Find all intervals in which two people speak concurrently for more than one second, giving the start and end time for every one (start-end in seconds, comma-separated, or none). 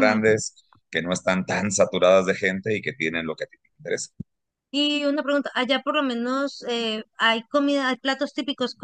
none